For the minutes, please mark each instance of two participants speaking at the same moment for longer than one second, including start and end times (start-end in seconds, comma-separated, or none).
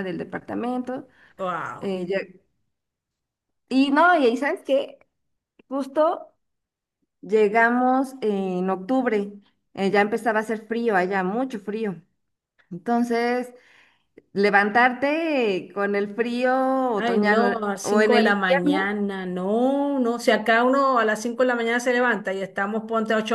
17.0-18.9